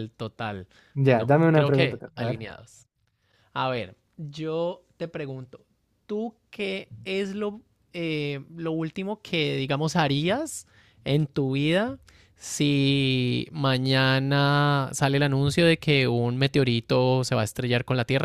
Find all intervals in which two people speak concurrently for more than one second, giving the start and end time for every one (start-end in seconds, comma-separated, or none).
1.1-2.4